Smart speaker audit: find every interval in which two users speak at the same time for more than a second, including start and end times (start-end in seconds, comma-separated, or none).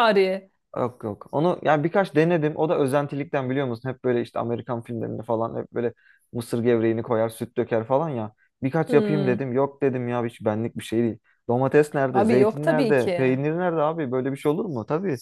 12.1-13.4